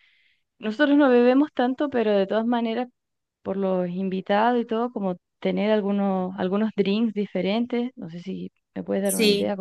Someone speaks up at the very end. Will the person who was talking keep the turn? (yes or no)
no